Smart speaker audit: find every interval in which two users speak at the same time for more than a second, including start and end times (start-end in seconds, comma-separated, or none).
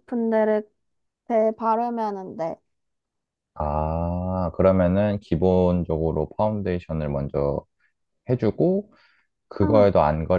none